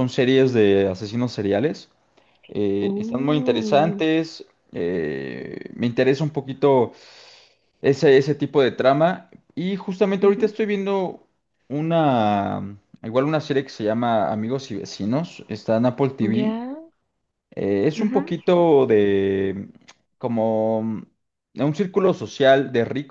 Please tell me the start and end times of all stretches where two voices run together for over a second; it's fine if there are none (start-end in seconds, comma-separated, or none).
2.8-4.0